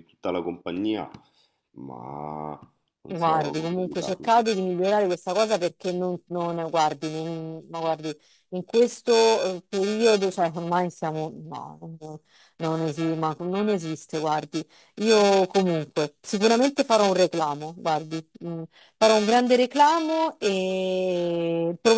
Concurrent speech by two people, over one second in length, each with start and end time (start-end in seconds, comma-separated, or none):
3.1-4.3